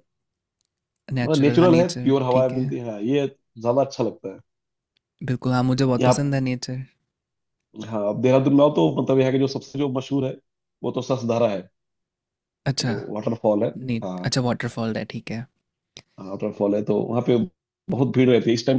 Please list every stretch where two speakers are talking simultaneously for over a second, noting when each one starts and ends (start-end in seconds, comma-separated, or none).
1.2-2.6